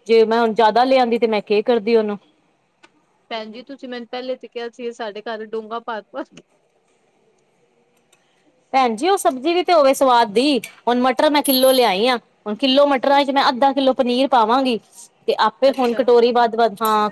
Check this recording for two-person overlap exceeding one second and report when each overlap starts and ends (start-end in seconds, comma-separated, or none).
none